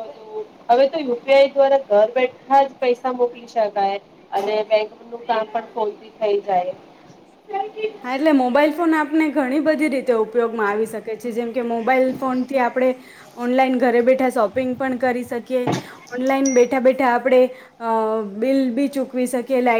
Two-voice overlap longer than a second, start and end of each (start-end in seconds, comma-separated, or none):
none